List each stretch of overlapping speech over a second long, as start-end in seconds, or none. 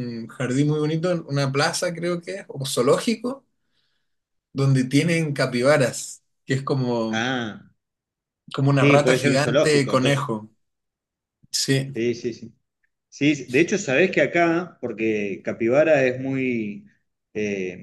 8.7-10.3